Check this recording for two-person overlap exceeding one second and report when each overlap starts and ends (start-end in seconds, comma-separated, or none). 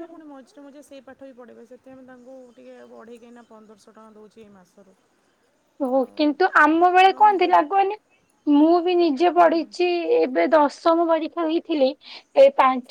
none